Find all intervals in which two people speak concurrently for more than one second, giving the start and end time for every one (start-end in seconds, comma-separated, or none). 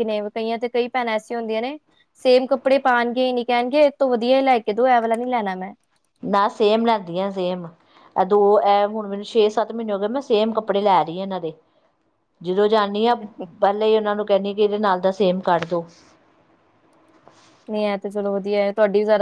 none